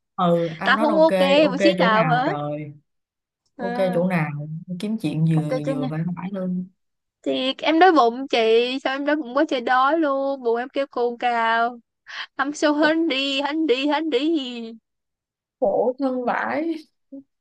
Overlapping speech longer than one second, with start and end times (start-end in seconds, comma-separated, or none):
0.6-2.4